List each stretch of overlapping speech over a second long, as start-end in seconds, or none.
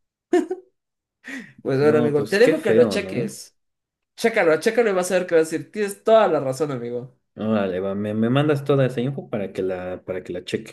1.8-3.4